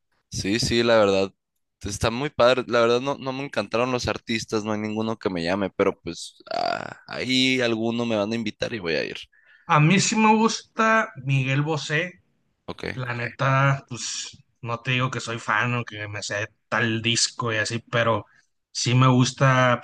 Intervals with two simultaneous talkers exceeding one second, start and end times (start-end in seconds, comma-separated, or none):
none